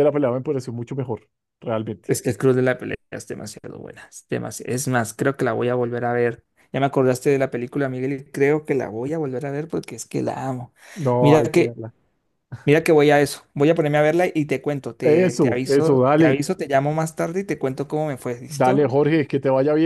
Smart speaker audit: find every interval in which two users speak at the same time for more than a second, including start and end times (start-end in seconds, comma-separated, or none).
15.0-16.4